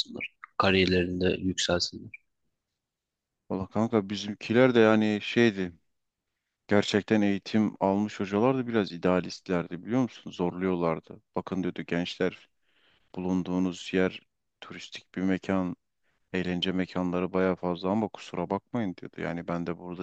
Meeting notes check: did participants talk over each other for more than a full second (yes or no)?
no